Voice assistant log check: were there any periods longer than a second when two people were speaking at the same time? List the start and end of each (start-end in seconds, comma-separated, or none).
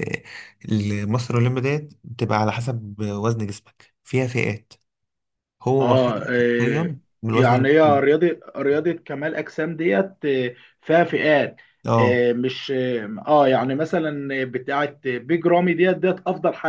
5.8-8.0